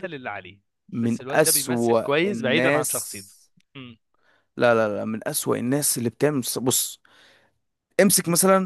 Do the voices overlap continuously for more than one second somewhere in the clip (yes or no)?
yes